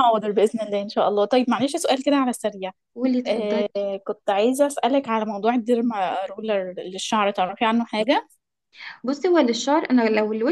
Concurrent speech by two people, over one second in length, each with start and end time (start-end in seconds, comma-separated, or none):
none